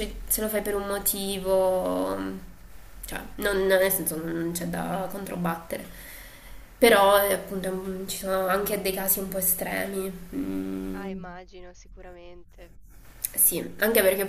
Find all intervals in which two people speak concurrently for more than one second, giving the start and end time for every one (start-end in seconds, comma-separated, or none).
none